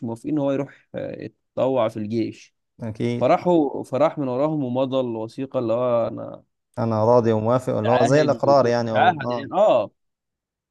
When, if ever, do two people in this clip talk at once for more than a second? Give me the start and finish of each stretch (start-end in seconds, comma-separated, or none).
7.8-9.5